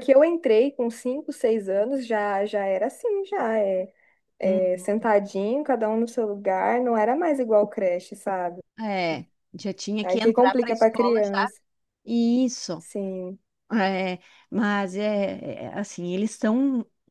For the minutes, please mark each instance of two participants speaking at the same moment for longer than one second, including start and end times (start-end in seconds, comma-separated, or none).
10.0-11.5